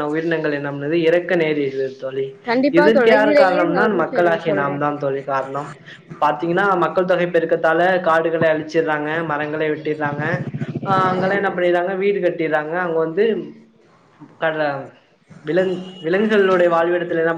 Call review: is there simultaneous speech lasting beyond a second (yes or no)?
yes